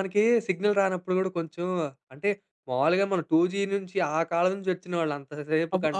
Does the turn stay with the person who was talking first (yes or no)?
yes